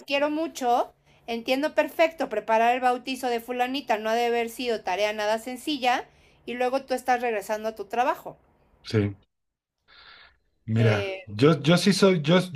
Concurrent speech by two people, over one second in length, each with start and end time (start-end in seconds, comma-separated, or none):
none